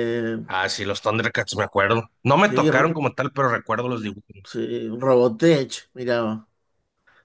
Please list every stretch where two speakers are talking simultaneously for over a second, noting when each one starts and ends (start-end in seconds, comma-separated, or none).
none